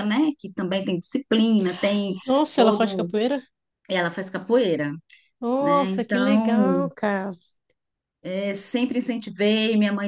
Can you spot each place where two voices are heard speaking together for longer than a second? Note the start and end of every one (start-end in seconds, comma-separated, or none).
5.6-6.9